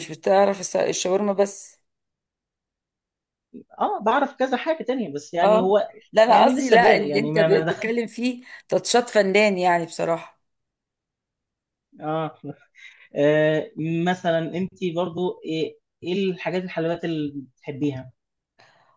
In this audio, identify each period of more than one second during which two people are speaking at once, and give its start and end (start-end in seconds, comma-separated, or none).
5.4-7.9